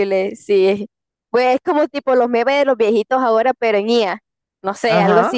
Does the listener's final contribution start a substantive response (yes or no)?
yes